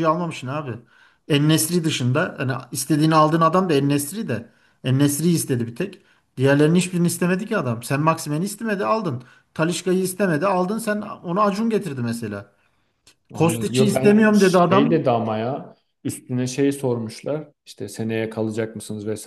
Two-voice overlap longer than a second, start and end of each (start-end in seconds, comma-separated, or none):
13.3-15.1